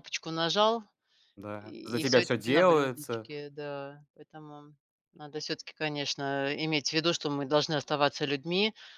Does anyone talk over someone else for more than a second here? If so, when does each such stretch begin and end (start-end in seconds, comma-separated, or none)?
1.6-3.3